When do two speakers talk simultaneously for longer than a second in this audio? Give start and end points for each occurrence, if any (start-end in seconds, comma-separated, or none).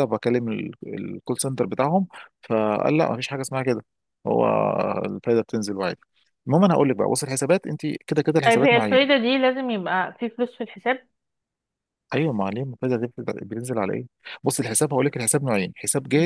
none